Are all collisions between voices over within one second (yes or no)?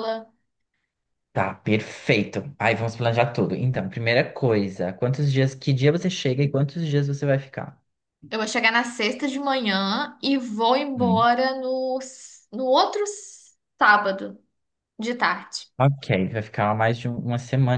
yes